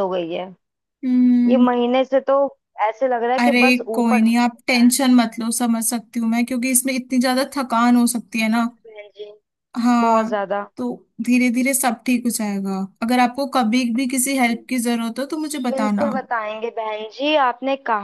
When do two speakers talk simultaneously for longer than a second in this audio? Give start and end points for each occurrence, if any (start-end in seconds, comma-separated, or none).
3.4-4.9